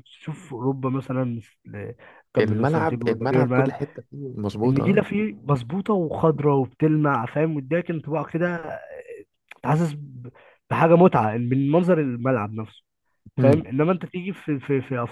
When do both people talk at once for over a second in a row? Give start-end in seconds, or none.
2.4-3.7